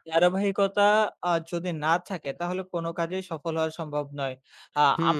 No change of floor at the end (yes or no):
no